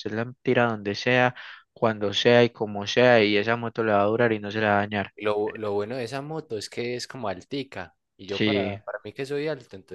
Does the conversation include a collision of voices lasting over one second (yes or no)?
no